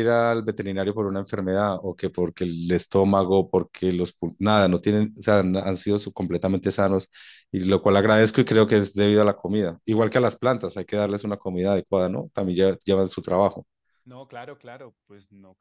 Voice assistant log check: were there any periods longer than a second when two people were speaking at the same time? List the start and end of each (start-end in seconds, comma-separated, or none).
none